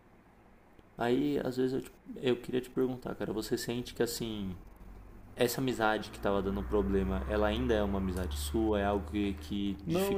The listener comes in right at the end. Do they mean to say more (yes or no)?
yes